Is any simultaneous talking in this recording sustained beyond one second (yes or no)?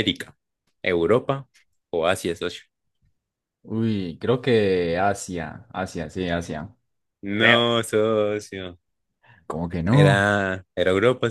no